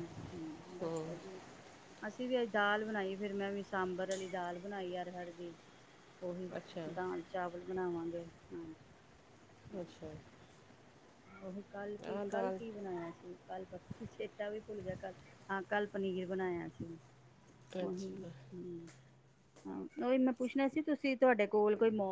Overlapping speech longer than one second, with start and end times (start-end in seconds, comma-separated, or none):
none